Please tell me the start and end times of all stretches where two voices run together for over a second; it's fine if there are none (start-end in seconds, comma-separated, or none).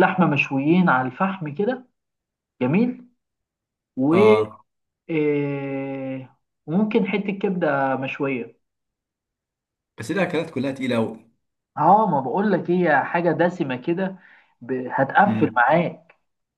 none